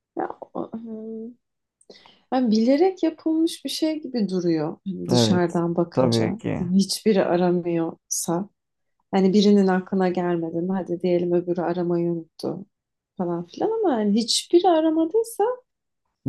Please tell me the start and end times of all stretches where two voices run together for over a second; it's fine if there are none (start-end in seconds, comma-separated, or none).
5.1-6.7